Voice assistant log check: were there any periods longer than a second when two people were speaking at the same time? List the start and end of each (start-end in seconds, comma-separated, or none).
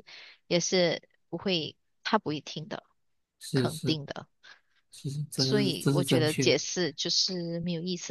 5.4-6.6